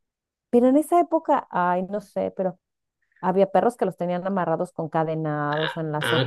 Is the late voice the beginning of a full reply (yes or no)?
yes